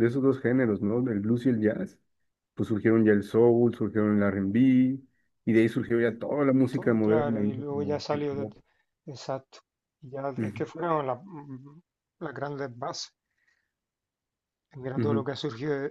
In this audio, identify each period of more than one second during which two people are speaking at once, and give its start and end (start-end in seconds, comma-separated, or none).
6.7-8.5